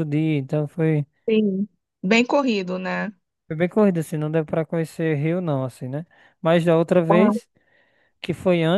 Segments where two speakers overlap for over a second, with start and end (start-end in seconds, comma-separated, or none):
none